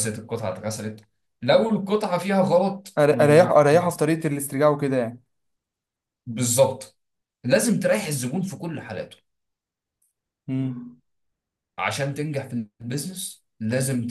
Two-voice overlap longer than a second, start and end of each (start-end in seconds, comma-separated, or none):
none